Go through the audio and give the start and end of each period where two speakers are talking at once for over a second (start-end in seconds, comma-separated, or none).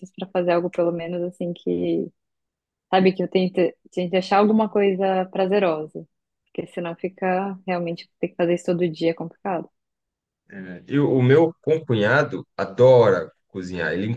none